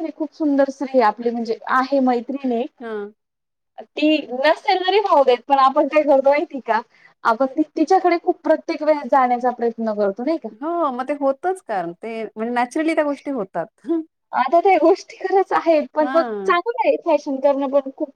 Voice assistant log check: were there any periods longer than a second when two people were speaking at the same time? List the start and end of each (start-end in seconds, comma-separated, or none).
none